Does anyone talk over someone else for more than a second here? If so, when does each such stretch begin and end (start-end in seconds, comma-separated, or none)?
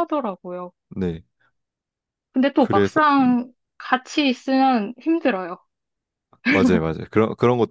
none